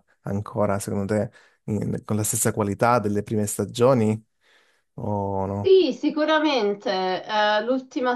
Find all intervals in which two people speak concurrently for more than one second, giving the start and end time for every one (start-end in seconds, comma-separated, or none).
none